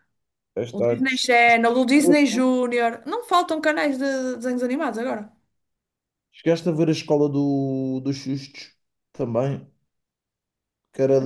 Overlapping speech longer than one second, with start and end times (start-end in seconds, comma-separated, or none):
none